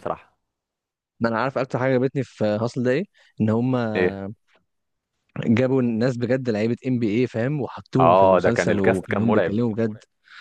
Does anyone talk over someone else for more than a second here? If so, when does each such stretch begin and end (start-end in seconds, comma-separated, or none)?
8.0-9.6